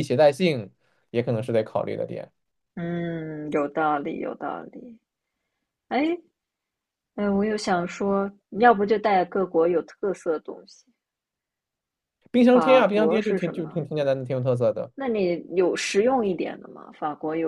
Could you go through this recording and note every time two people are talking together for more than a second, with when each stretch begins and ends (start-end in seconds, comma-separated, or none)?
12.5-13.8